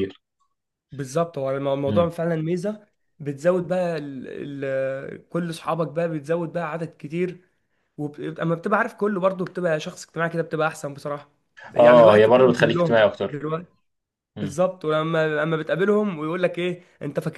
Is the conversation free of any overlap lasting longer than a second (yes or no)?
no